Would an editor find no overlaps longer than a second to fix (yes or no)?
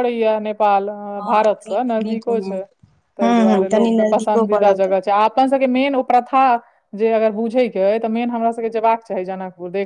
no